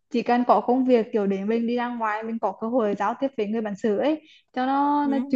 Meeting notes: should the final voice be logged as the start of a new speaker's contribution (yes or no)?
no